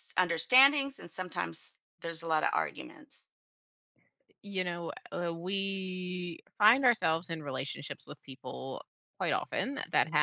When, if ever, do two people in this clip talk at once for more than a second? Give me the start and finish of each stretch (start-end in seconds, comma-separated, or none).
none